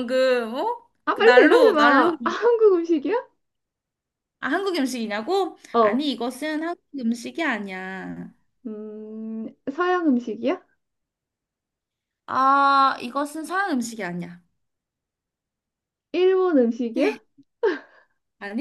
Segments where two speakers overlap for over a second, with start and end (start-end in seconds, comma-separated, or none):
1.0-2.3